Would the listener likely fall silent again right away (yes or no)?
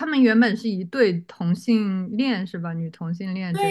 no